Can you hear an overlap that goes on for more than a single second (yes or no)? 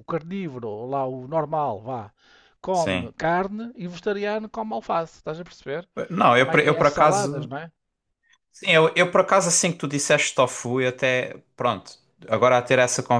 yes